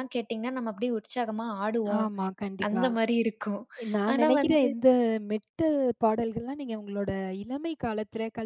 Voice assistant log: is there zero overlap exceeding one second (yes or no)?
yes